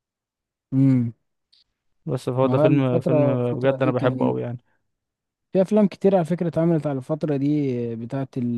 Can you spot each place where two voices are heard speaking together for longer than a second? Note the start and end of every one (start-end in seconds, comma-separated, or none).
2.5-4.4